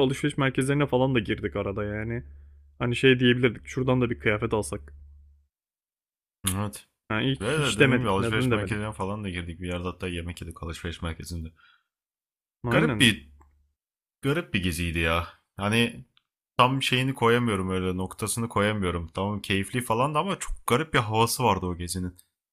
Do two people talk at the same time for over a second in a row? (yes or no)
yes